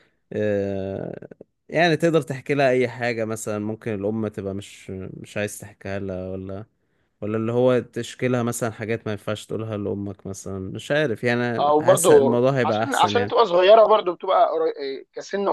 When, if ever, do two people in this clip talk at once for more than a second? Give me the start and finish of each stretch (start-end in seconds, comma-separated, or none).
11.6-13.3